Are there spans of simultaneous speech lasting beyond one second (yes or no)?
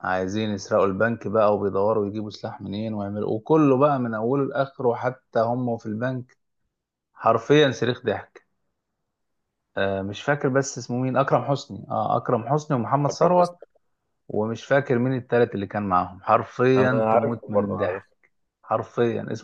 yes